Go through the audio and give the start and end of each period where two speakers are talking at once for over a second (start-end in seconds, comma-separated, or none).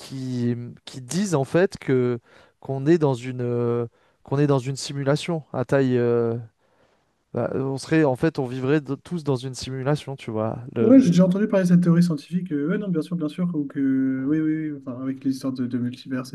none